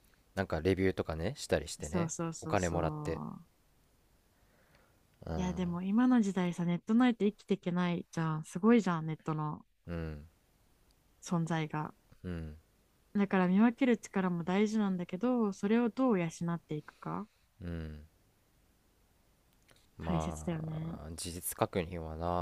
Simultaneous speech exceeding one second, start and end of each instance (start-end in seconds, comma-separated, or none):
1.8-3.2